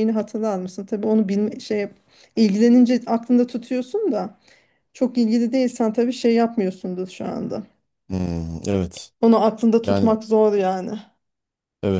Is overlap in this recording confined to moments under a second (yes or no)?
yes